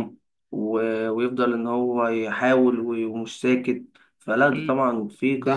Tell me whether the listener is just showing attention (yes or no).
no